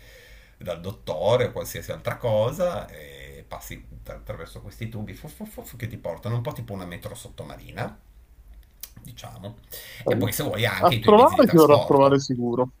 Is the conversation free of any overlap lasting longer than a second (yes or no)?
no